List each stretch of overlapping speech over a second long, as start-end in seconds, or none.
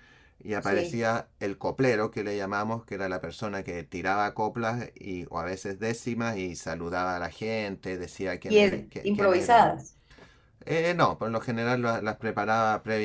8.5-9.8